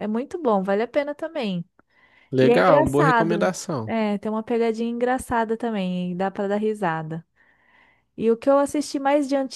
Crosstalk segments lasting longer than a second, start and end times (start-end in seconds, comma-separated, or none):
2.4-3.9